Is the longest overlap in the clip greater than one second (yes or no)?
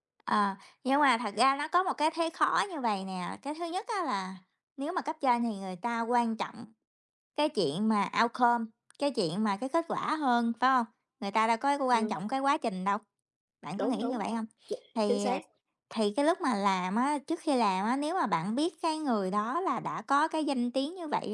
no